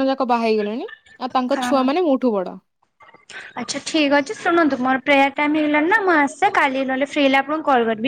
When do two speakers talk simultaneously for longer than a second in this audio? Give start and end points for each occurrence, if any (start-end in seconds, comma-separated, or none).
none